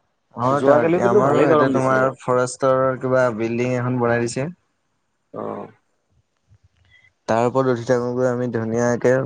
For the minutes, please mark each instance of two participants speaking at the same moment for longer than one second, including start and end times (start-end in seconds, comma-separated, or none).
0.6-2.0